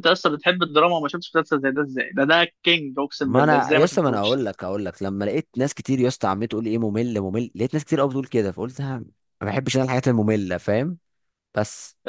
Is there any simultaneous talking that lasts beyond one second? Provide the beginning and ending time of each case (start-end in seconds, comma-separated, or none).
3.2-4.4